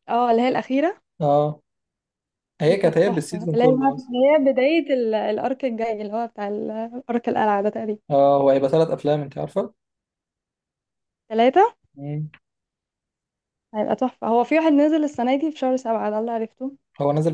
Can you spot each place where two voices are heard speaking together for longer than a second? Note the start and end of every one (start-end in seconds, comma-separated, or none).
2.6-4.1